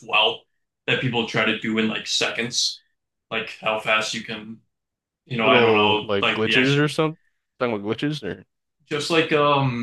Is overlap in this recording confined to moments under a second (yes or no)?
no